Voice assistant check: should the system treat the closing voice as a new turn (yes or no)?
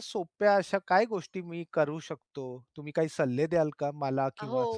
yes